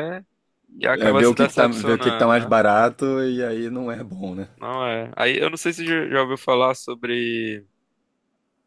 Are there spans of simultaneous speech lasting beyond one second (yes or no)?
yes